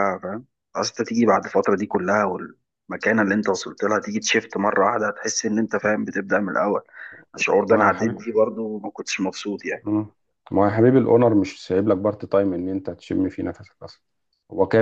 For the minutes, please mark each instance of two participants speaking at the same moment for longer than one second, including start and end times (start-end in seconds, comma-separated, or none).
none